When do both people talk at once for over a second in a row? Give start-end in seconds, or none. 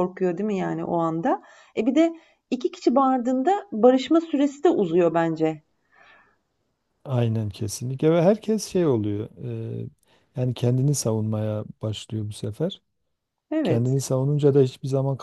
none